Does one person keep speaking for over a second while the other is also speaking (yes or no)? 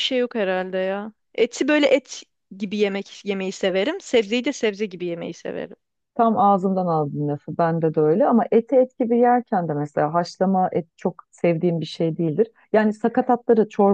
no